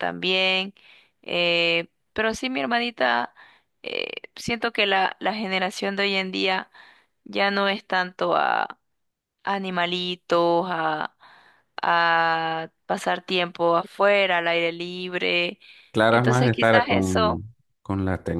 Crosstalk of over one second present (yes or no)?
yes